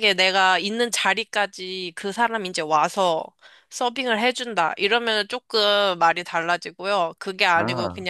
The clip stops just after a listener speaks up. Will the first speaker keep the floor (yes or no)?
yes